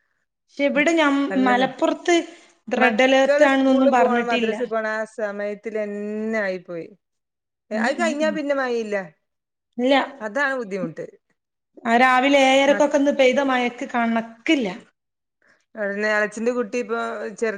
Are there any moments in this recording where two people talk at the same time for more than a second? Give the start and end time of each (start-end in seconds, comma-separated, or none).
2.8-4.5